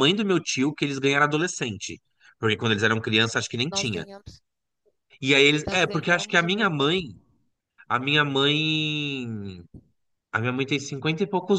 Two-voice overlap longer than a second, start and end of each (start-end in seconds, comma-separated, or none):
5.7-6.9